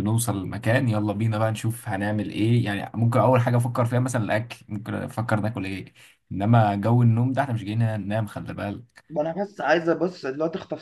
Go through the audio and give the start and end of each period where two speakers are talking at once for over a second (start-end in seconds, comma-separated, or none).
none